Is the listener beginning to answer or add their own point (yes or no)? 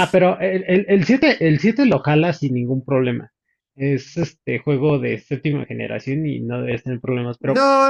yes